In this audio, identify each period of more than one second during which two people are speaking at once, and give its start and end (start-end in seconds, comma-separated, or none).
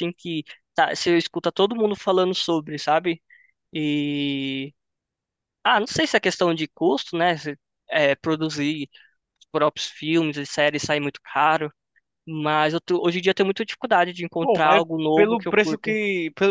14.4-16.0